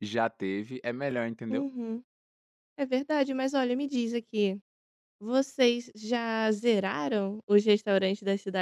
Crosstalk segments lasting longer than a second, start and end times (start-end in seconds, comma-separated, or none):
none